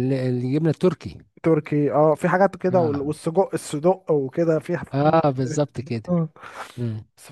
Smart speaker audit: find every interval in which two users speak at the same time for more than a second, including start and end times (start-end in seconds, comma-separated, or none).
none